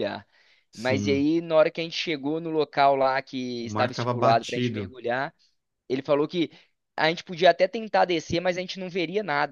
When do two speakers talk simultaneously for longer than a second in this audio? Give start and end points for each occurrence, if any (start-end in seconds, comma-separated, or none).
3.6-4.9